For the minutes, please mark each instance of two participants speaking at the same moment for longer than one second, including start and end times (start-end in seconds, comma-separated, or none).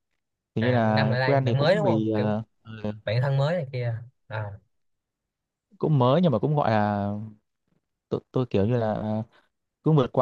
0.6-2.4